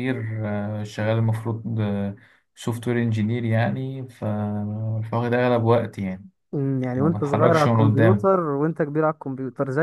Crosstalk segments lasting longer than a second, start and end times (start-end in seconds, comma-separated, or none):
7.0-8.3